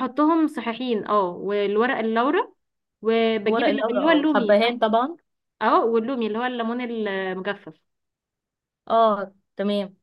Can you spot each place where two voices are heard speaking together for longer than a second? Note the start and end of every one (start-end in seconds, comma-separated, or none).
3.5-4.8